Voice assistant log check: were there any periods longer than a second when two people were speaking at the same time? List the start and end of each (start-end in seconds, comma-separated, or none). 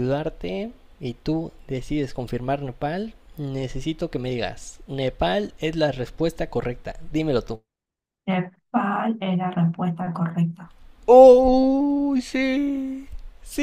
none